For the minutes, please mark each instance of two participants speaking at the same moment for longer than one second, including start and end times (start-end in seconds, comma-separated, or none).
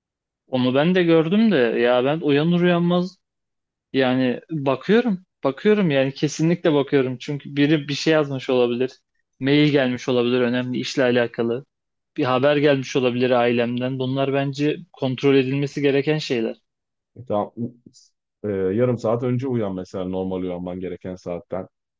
none